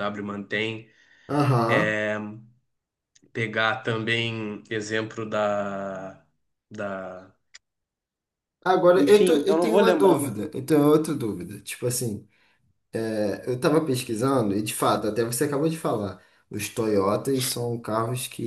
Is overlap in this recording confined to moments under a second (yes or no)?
no